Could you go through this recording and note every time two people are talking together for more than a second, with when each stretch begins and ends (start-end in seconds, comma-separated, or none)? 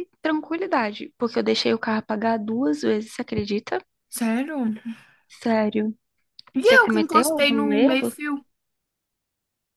6.6-8.1